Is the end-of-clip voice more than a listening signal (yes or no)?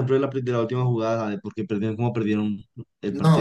yes